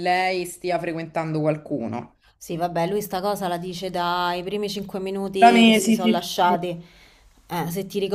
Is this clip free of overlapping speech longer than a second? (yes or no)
no